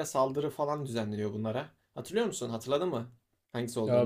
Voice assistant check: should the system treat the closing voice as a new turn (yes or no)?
yes